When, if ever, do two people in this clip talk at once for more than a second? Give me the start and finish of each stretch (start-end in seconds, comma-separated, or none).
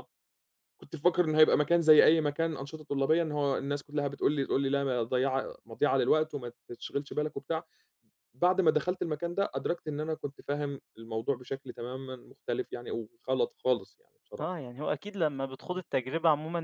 none